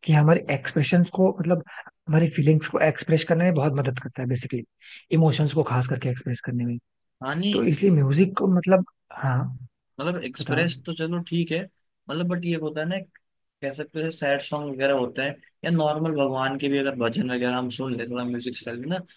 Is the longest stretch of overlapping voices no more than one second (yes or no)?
yes